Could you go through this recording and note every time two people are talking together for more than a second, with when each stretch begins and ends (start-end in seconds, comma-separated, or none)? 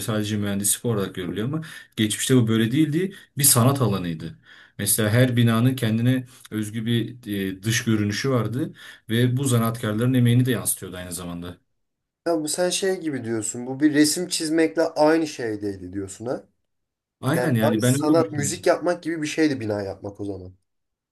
17.3-18.7